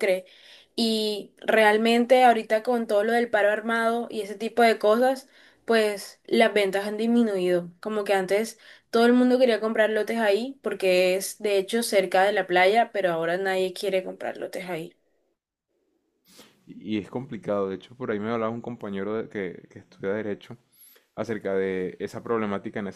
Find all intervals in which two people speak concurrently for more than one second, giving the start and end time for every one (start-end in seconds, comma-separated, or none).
none